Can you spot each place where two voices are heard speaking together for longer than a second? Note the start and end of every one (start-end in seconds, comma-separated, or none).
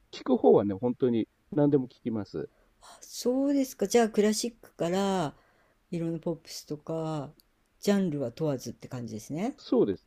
none